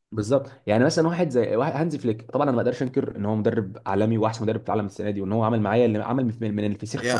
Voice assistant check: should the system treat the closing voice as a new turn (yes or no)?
yes